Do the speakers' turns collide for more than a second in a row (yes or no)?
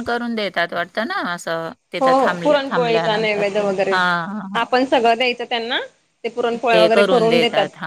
yes